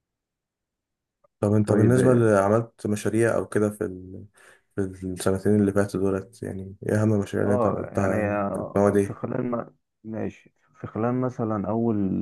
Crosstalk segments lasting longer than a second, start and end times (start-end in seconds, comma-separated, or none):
7.4-9.2